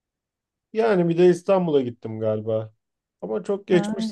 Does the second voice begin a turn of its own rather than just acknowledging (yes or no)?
no